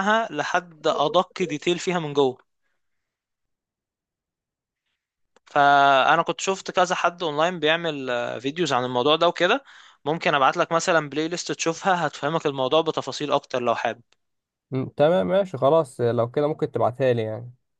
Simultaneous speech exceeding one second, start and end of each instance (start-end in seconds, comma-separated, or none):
none